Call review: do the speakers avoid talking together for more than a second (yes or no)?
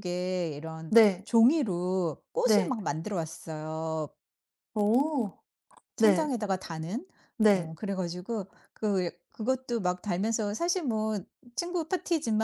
yes